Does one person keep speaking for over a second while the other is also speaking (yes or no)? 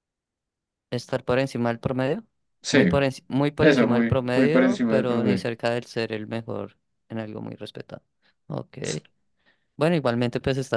yes